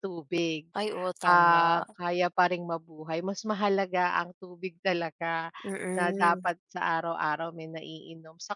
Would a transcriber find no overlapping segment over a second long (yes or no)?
yes